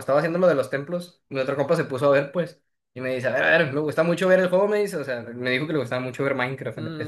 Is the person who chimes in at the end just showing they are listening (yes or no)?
no